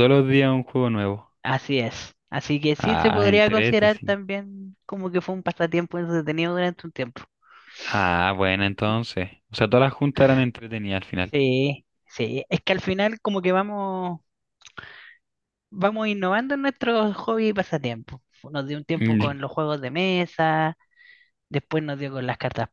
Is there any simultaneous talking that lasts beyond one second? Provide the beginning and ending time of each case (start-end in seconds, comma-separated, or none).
2.8-4.2